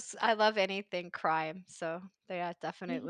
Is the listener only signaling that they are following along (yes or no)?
no